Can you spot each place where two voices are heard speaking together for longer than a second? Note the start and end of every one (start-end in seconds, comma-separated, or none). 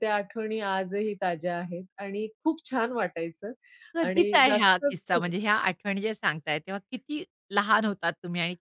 4.0-5.3